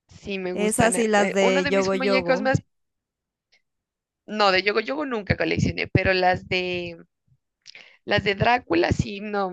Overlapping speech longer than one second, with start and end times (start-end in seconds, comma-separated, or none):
0.5-2.6